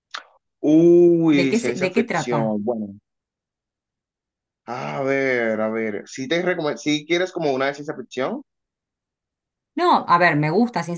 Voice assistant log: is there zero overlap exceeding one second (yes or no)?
no